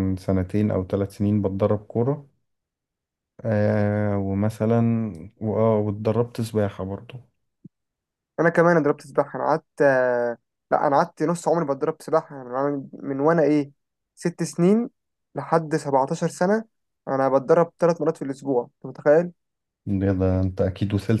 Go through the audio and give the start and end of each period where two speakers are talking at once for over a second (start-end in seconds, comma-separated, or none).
none